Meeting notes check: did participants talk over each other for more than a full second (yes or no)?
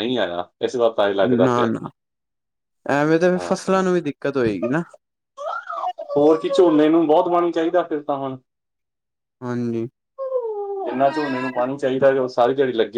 no